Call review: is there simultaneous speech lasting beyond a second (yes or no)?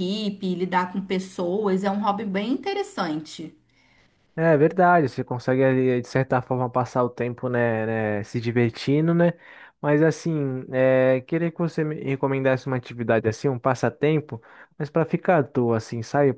no